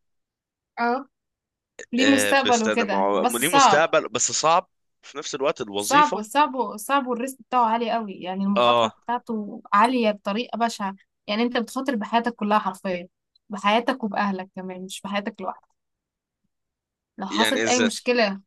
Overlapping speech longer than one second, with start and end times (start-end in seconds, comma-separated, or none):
2.0-3.9